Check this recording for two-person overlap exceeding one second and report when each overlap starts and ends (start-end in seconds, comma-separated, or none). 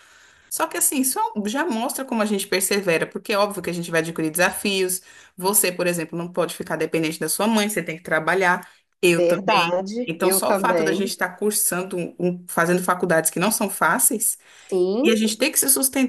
9.1-11.1